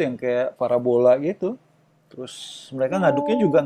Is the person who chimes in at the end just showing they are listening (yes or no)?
yes